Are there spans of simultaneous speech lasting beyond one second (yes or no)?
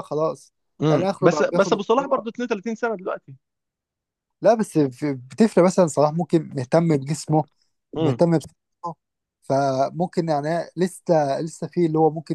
yes